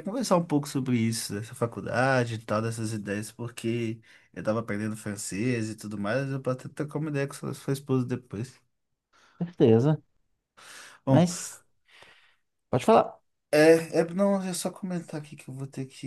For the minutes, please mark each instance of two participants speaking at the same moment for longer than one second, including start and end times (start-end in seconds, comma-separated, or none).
none